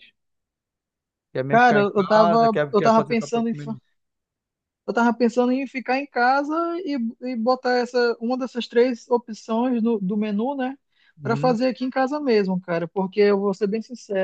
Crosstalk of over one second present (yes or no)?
yes